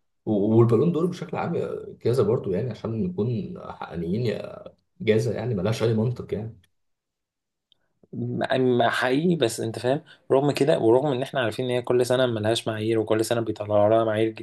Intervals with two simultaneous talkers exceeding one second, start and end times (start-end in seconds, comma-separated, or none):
none